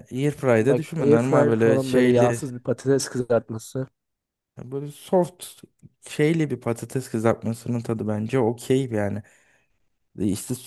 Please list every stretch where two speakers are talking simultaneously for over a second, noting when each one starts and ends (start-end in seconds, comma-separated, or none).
0.6-2.4